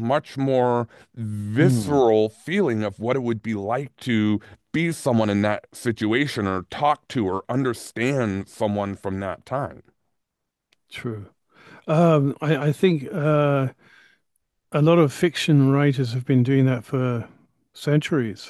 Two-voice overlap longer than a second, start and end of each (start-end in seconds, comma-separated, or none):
none